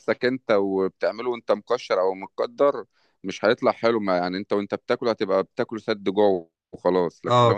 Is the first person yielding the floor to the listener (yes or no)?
no